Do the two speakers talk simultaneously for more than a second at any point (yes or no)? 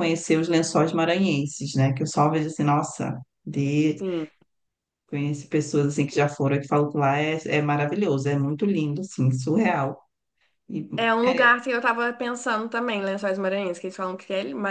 no